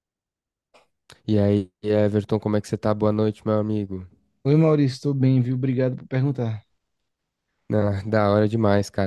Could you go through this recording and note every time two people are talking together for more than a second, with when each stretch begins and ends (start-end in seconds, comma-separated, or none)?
none